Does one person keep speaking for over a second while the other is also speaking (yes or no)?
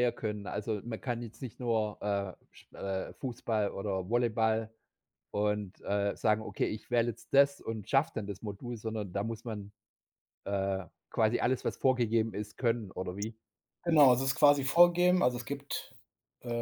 no